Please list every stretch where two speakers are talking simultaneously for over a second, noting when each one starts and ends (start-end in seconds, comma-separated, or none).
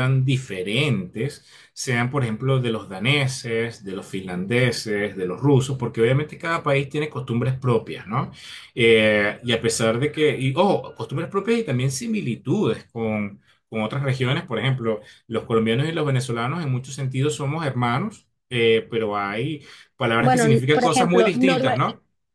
20.2-21.8